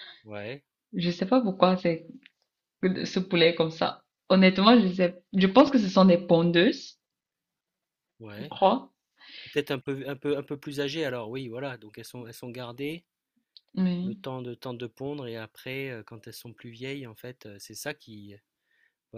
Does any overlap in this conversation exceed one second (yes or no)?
no